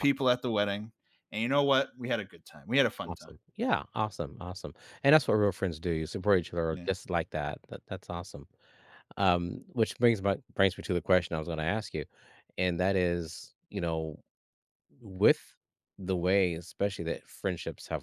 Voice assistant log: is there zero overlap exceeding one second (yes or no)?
yes